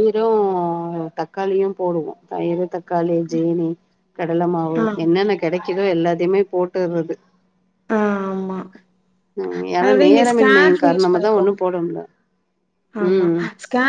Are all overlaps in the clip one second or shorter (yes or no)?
no